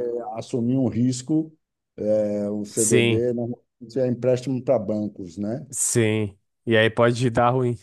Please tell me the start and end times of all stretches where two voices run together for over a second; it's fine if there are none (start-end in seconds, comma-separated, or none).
none